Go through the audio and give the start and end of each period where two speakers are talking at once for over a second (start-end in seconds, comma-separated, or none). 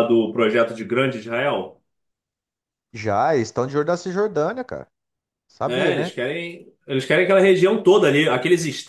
none